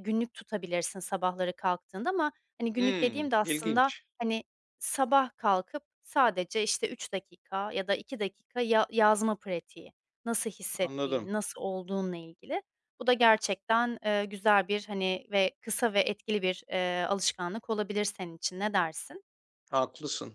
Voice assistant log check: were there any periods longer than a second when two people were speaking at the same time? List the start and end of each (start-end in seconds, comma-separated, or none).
2.8-4.0